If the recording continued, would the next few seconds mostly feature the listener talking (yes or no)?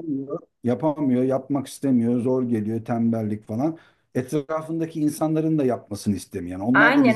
yes